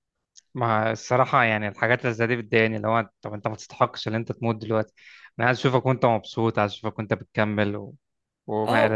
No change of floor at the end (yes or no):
no